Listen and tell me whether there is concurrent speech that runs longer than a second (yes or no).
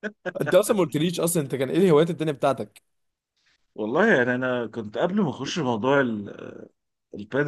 no